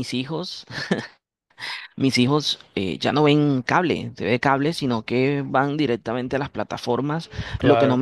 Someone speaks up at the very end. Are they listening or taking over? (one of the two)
listening